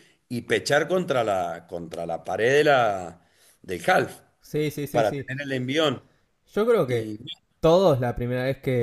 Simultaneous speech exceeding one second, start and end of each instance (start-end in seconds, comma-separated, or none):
none